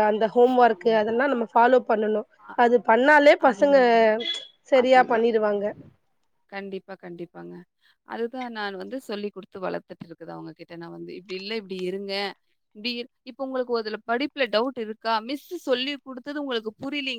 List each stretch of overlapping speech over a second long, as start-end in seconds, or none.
none